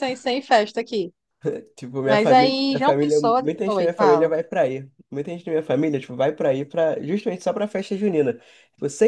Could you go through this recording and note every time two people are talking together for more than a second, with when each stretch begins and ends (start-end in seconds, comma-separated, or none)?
2.0-4.3